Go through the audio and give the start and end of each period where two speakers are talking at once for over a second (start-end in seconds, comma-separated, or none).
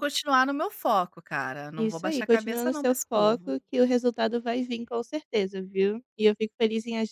1.8-3.5